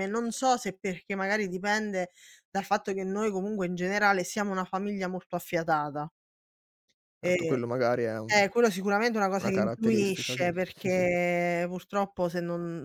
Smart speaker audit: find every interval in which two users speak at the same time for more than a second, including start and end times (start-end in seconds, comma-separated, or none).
9.4-11.1